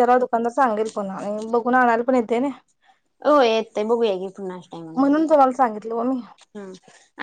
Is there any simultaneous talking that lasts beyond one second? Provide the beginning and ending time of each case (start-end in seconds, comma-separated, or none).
none